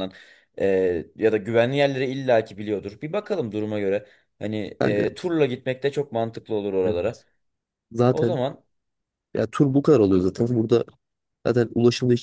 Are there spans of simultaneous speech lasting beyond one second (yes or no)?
no